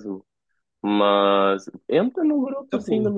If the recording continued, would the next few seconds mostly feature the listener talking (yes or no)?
no